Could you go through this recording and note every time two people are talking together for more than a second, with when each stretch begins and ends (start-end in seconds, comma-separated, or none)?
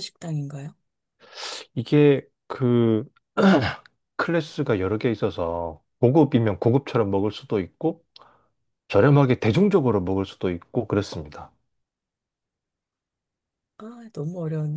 none